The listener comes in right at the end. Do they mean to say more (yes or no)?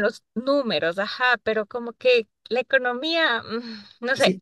yes